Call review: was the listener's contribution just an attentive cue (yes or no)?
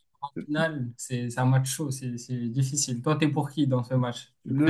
no